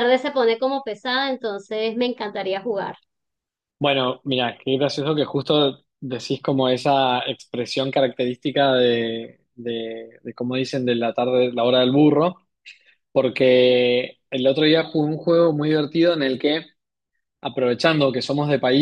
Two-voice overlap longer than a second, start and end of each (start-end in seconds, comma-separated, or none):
none